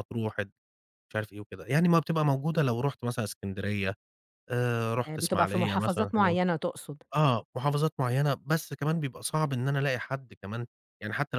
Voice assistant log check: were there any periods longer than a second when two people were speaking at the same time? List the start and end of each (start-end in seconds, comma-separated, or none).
5.0-6.3